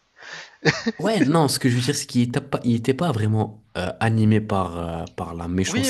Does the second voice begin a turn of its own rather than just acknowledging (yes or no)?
yes